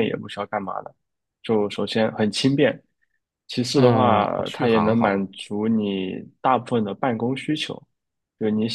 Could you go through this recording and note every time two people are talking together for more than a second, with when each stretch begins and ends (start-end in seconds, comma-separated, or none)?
3.7-5.3